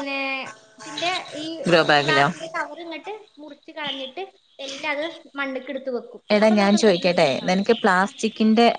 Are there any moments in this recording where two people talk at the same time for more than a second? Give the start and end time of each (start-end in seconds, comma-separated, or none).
6.3-8.1